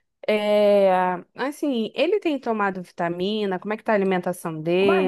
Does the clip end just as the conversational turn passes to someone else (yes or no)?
yes